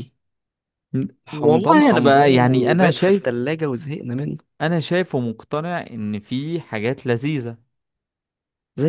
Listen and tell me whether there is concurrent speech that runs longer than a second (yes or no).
yes